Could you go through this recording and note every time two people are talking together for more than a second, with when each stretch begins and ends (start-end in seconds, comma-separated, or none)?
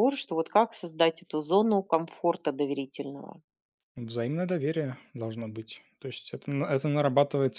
none